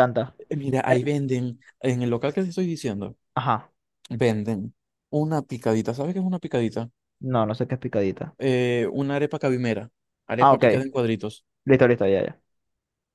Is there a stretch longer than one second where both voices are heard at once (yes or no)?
no